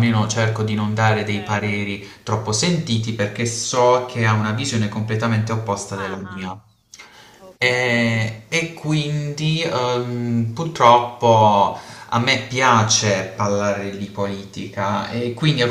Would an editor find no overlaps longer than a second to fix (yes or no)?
yes